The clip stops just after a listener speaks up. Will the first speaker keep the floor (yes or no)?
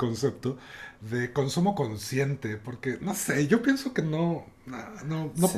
yes